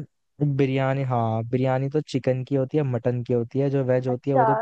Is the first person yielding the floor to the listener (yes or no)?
yes